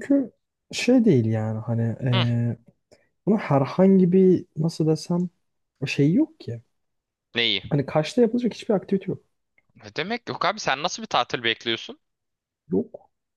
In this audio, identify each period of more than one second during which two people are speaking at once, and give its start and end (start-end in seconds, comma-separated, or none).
none